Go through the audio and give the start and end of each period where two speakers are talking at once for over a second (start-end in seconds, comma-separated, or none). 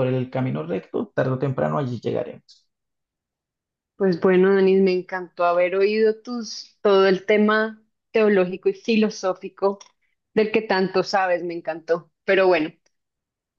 none